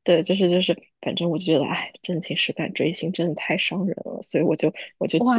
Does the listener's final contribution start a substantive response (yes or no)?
yes